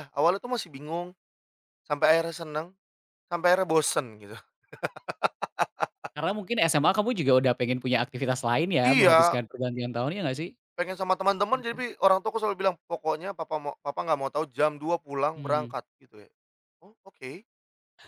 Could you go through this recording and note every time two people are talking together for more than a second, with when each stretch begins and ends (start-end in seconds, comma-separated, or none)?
none